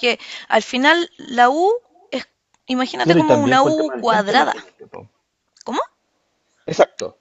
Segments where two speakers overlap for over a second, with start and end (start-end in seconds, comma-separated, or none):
3.0-4.5